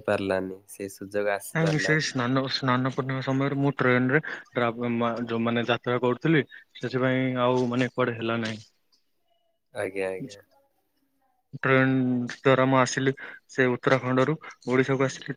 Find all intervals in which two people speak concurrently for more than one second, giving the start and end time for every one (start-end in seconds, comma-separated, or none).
none